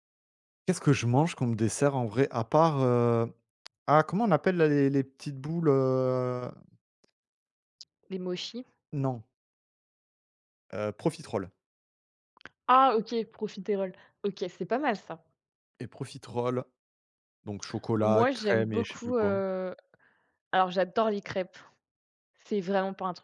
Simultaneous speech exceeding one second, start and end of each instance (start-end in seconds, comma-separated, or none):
18.1-19.4